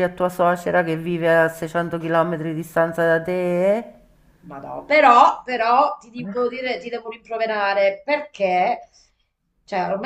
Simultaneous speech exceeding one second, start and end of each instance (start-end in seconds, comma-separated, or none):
none